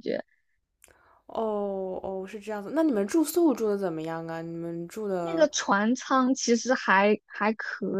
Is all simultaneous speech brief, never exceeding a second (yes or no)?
yes